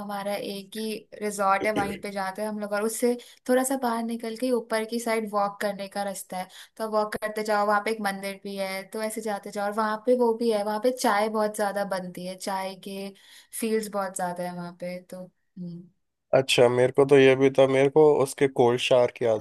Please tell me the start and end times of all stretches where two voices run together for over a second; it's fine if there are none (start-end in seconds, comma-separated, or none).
none